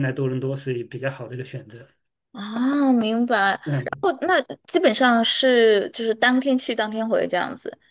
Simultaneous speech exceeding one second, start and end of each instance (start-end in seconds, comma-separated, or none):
none